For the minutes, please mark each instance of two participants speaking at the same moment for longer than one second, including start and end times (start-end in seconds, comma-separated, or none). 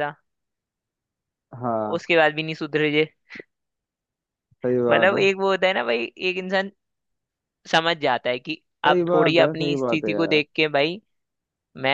8.8-10.4